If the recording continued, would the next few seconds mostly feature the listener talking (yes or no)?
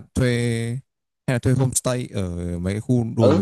yes